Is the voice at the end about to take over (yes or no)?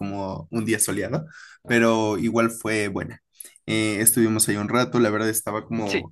no